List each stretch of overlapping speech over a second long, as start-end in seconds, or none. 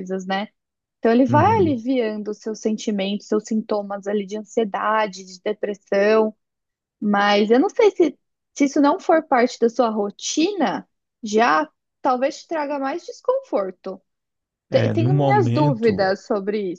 14.7-16.1